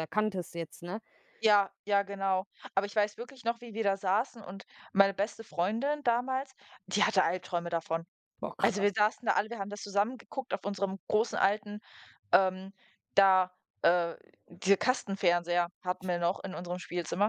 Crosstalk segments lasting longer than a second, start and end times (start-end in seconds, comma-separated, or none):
none